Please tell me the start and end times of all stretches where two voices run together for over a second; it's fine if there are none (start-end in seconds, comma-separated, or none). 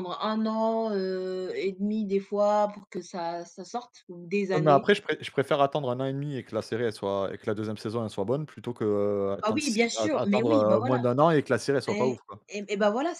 9.4-11.0